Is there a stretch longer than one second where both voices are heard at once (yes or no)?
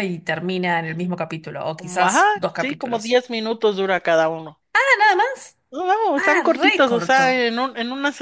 yes